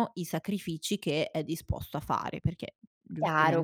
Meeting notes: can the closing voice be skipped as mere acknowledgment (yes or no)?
no